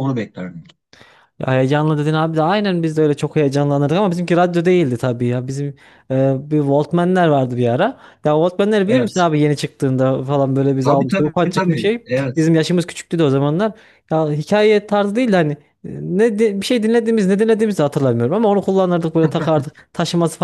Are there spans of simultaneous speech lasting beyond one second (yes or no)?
yes